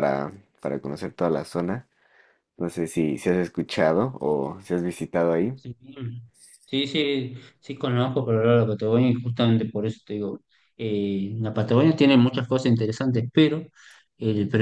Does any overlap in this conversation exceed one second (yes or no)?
no